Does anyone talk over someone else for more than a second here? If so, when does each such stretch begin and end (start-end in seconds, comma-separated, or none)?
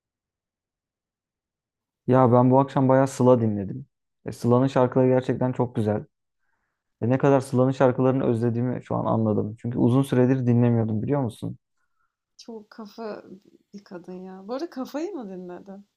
none